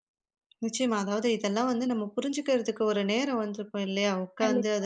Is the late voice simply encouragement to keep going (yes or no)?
yes